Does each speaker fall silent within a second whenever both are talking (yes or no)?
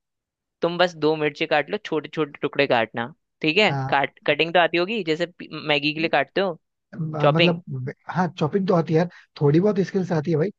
yes